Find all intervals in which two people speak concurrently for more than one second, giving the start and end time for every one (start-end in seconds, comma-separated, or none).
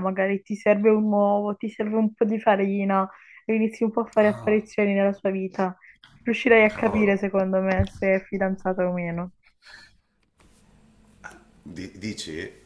none